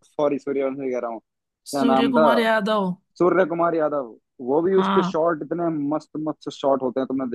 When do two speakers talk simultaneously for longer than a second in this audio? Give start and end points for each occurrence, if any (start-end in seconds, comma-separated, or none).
none